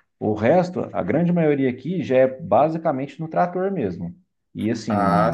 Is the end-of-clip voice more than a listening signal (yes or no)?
yes